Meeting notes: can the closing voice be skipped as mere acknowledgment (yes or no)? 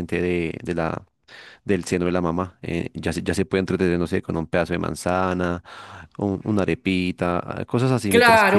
no